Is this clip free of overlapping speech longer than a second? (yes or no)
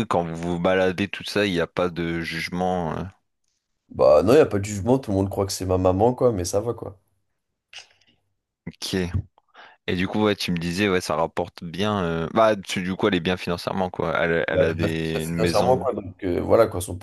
no